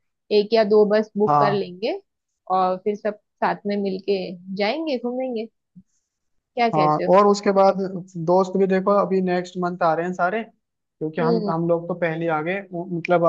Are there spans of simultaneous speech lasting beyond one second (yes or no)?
no